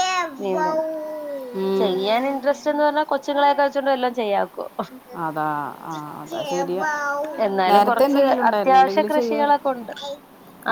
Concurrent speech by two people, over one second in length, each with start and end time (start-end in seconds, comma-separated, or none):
7.7-9.6